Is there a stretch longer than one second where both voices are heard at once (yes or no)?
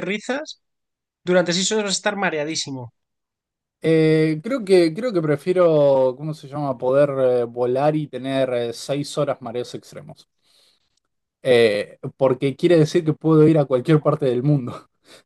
no